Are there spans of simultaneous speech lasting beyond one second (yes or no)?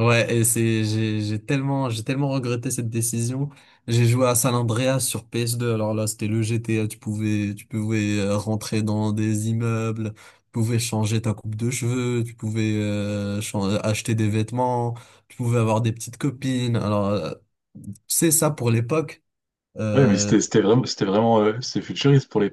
no